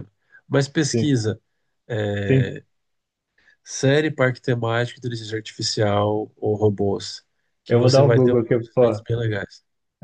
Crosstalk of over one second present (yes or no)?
yes